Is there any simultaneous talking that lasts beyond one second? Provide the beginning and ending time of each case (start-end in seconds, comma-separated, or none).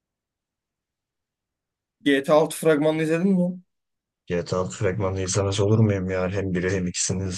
none